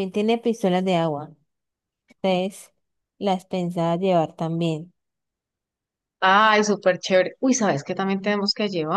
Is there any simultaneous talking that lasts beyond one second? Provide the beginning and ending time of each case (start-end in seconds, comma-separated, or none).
none